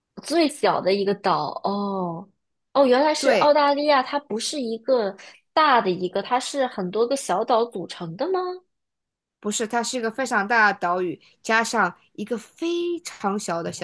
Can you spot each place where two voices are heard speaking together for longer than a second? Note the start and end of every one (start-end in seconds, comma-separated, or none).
none